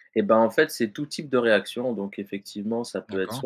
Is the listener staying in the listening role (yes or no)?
yes